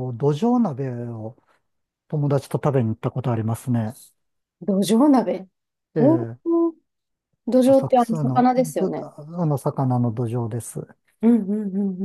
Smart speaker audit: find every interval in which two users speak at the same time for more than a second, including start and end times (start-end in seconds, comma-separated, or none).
7.7-9.1